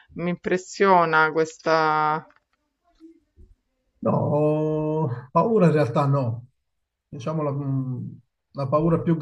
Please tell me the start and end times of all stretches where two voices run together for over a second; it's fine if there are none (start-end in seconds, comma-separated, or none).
none